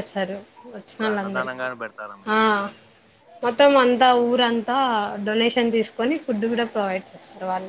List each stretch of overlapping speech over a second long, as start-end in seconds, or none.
0.9-2.4